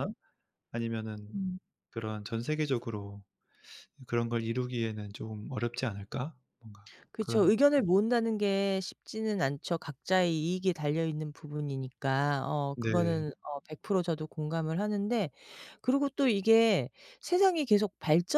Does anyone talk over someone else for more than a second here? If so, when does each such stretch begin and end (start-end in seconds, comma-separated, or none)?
none